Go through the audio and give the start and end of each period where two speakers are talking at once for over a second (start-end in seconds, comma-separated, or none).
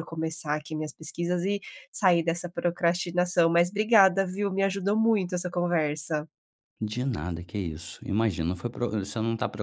none